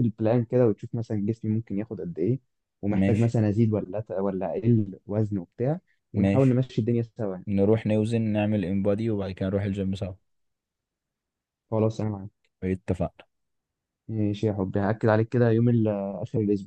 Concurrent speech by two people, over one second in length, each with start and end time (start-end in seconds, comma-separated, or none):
none